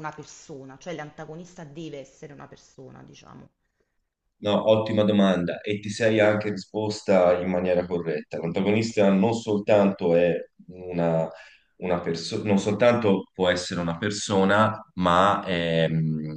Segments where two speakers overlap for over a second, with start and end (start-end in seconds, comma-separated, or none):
none